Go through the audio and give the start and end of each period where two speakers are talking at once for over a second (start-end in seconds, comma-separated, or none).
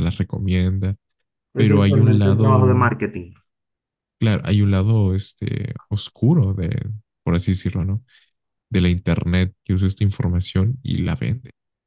1.6-2.9